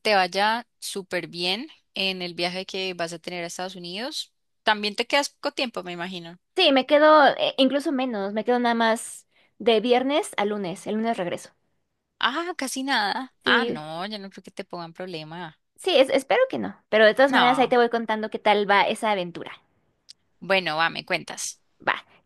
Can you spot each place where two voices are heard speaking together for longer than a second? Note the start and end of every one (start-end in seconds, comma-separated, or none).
none